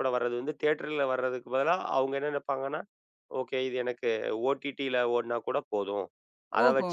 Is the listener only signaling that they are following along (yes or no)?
yes